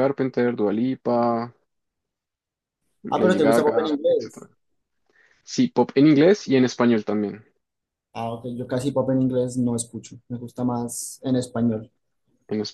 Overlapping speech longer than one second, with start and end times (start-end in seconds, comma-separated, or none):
3.1-4.5